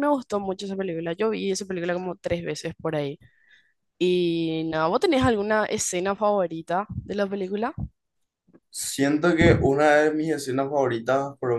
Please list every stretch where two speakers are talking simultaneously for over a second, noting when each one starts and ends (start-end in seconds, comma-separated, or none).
none